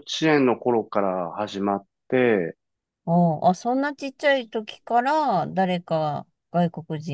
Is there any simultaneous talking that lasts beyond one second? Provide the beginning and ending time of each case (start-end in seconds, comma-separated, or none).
none